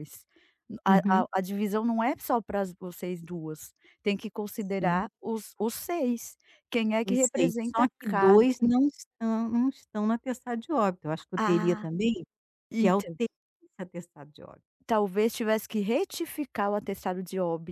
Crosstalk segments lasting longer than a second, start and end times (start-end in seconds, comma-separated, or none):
7.0-8.4